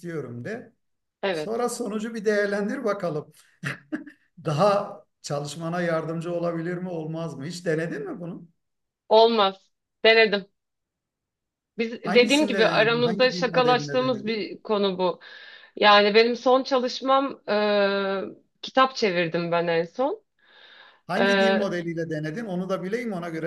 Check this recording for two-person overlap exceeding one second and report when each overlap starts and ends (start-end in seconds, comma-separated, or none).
12.0-14.5